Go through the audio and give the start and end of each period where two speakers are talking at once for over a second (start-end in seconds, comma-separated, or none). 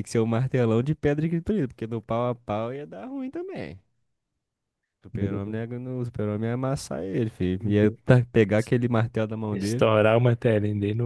none